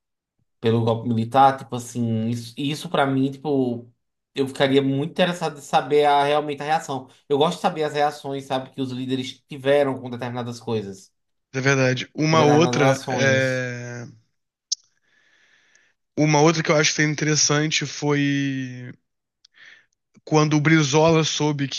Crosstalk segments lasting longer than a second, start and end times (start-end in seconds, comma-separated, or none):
12.3-13.6